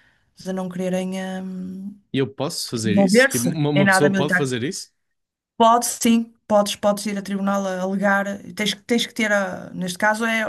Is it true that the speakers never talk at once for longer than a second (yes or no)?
no